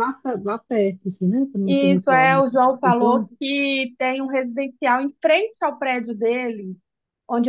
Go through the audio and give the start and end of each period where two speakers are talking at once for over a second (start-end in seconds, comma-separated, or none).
1.6-3.3